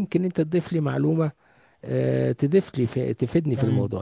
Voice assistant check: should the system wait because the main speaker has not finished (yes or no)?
no